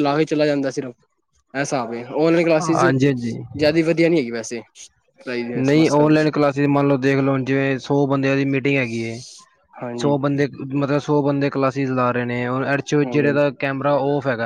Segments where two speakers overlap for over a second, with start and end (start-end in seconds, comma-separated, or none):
none